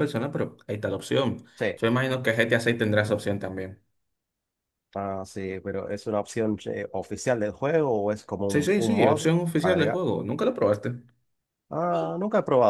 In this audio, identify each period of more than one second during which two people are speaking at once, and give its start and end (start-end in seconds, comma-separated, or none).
8.5-10.0